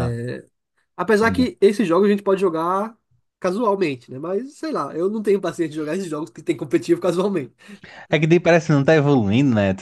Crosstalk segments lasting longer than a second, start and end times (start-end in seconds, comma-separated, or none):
none